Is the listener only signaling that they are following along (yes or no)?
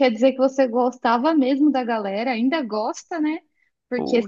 yes